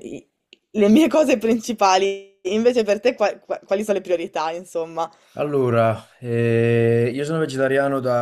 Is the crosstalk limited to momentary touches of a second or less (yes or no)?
yes